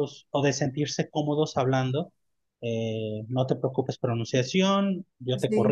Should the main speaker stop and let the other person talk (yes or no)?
no